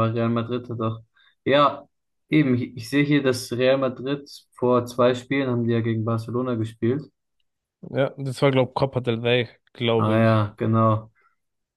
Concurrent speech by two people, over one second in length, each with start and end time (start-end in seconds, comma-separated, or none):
none